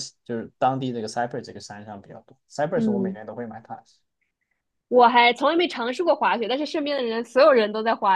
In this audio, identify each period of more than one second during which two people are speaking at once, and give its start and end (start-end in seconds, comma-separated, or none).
none